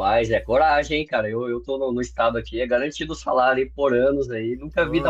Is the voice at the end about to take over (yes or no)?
yes